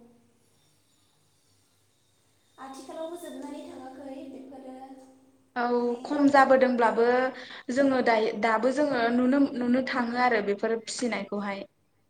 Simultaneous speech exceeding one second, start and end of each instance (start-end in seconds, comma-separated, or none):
none